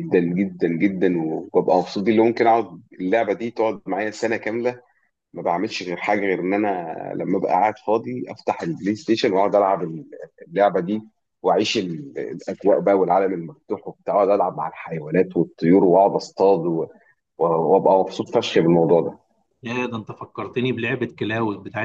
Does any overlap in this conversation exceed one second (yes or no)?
no